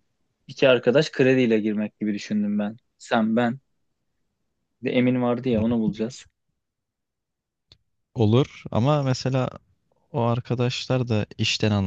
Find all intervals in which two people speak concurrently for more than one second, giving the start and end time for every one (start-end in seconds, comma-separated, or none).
none